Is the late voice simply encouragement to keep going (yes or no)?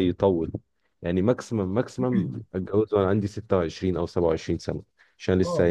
yes